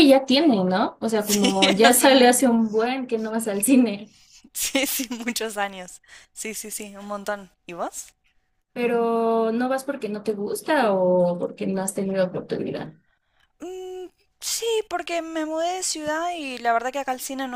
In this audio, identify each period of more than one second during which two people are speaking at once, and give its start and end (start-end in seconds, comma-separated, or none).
1.2-2.5